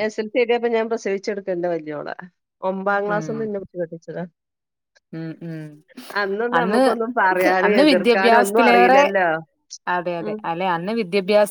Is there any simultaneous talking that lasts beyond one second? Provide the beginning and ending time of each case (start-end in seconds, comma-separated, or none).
7.7-9.0